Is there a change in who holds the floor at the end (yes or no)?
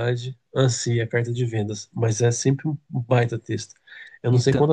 no